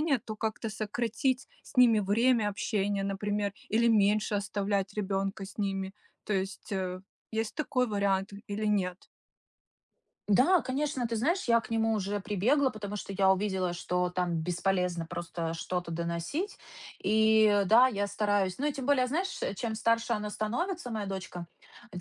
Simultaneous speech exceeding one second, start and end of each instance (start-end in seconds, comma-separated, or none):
none